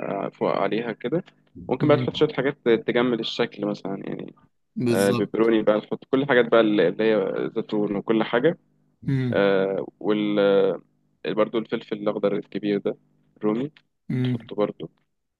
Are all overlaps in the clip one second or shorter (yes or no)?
yes